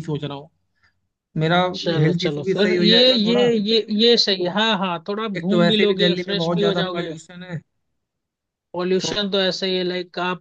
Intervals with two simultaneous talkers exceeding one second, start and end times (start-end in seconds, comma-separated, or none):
2.0-3.5, 5.3-7.1